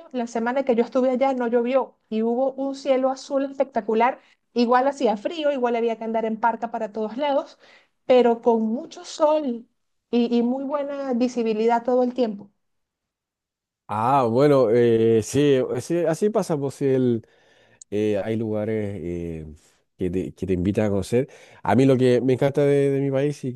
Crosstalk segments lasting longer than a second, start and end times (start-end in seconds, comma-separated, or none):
none